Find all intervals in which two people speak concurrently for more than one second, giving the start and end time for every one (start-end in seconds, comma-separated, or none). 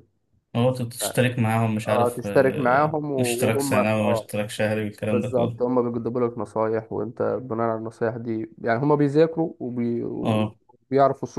1.8-4.3